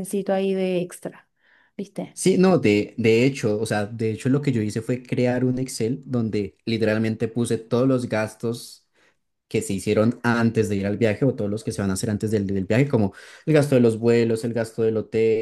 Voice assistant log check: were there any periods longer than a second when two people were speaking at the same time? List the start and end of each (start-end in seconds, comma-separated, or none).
none